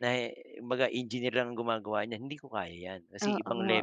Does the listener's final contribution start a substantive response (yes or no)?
yes